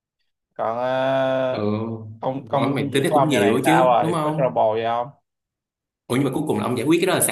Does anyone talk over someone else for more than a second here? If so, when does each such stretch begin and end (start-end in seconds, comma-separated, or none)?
2.4-4.6